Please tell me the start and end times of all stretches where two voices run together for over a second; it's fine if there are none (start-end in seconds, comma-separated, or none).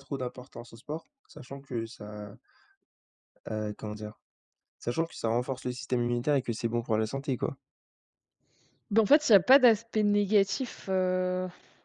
none